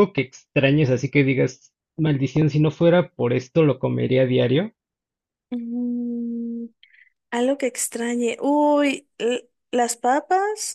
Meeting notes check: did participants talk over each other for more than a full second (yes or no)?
no